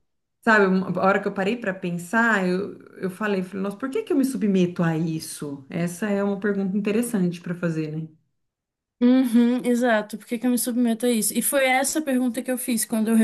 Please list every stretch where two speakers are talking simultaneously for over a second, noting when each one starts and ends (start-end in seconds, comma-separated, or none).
none